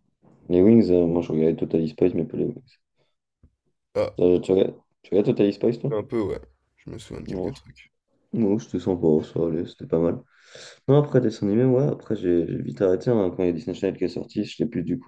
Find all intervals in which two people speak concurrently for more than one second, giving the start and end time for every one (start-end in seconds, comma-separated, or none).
none